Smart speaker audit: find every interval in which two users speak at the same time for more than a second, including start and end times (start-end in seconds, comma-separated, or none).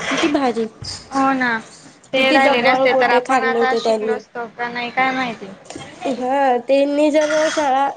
2.1-4.1